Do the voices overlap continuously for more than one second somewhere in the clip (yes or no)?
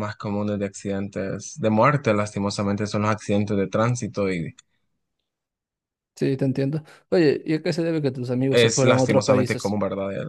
yes